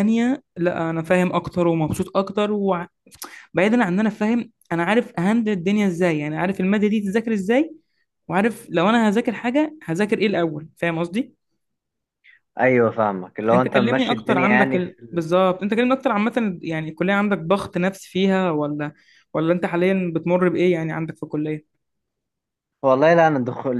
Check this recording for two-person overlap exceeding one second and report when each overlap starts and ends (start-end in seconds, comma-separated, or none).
13.5-15.3